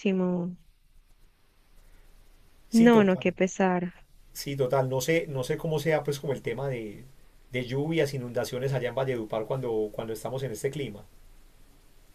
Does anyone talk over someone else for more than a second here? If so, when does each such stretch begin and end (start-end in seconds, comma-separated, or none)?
none